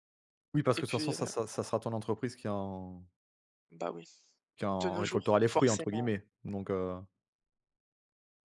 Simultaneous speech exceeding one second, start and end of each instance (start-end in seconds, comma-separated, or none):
4.8-6.1